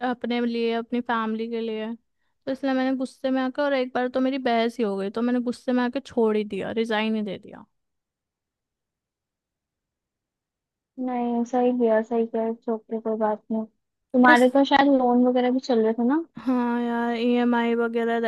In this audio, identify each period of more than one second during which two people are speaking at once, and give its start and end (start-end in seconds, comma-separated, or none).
none